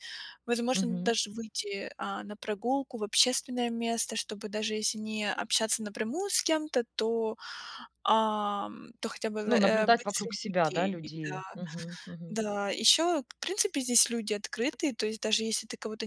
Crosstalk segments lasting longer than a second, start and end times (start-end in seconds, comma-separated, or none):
9.5-11.4